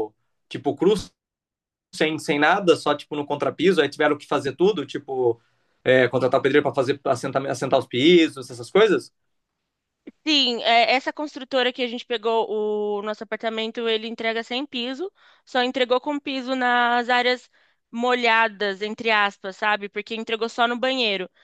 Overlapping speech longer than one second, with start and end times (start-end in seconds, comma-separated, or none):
none